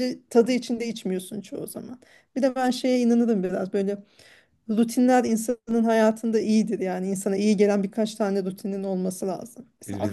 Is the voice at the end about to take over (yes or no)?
yes